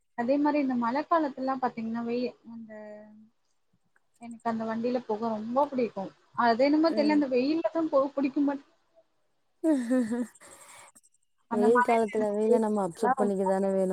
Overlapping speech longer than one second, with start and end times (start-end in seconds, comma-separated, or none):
11.6-13.3